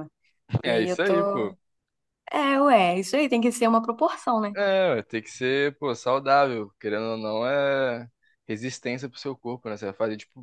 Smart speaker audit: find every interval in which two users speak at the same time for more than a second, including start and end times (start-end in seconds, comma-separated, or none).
none